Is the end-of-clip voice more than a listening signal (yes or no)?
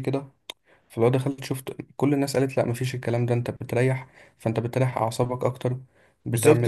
yes